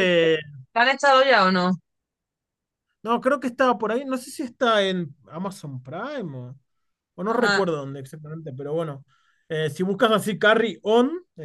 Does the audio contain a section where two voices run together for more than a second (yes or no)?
no